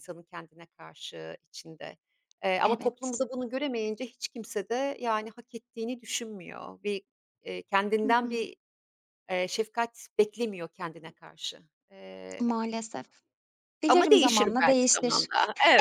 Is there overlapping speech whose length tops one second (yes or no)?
yes